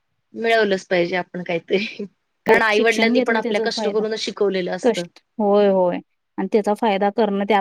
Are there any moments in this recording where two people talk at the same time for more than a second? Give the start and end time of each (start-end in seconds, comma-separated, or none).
2.8-4.0